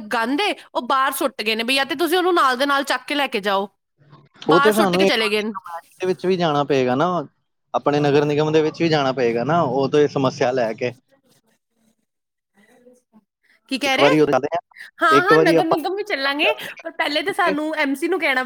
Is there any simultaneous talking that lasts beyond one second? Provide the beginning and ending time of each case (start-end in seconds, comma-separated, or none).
none